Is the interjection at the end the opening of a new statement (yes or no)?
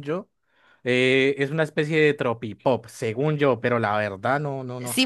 yes